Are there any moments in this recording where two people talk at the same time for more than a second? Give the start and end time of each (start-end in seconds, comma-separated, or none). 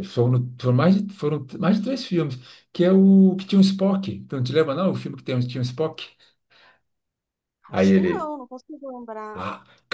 none